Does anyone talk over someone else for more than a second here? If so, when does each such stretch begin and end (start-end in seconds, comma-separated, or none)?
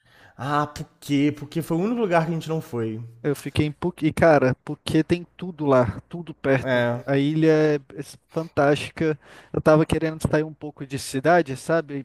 none